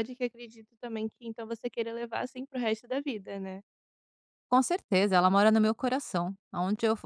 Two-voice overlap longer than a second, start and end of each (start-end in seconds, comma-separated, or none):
none